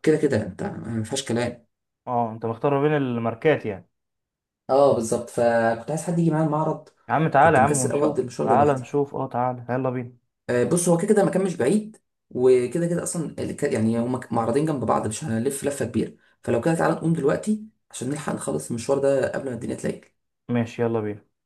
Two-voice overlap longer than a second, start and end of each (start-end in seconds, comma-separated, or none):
7.4-8.8